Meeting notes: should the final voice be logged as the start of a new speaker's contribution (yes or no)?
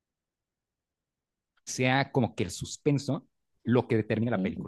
no